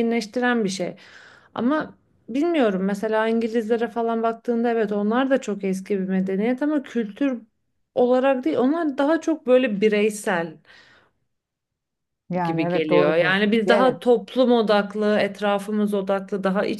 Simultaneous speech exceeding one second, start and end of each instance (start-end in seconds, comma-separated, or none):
12.4-14.0